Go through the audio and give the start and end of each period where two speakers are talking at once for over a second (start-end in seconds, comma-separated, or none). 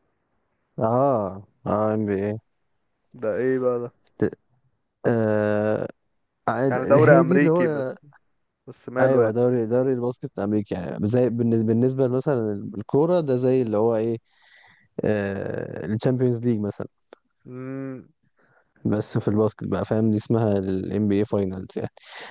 6.7-7.9